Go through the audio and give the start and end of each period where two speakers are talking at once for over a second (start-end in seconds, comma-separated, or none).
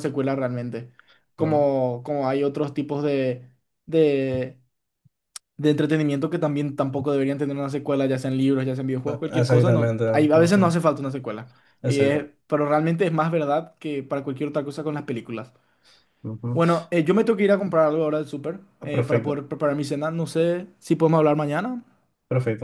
9.1-10.8